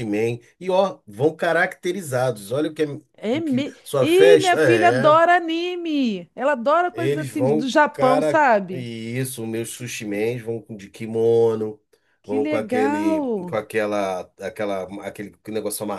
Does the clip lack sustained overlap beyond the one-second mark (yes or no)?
no